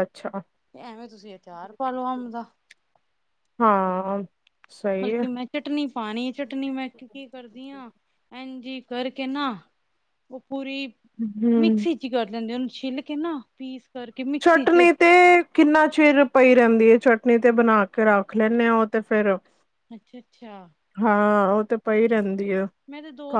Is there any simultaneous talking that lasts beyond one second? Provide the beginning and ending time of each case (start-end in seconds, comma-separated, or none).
none